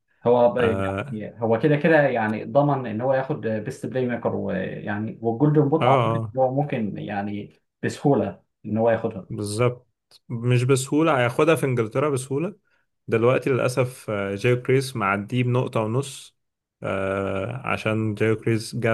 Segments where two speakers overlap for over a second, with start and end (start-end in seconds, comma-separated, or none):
none